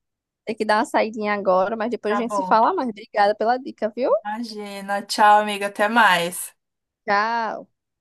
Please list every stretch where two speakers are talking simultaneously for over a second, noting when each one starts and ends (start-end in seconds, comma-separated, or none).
none